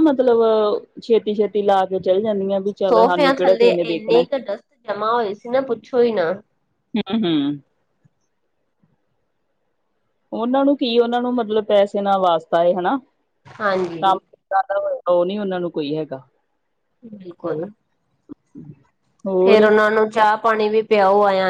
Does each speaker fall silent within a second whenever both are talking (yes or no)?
no